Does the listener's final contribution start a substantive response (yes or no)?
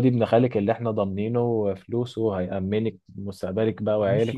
yes